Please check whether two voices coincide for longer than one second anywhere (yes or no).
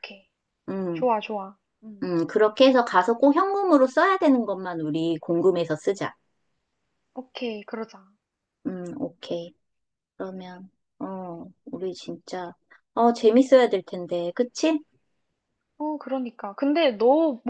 no